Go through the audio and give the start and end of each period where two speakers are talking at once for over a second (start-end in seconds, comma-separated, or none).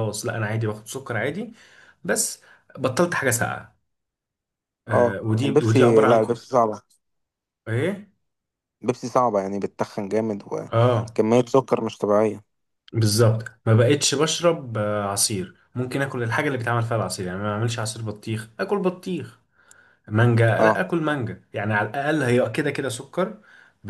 4.9-6.4